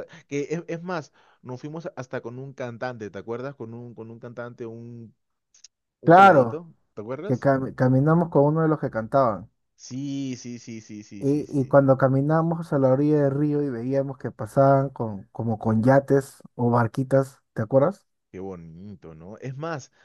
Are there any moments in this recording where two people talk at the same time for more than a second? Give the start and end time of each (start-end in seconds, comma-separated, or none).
none